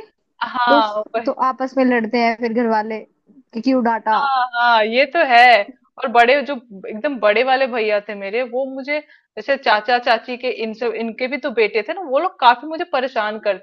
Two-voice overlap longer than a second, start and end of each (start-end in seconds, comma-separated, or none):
none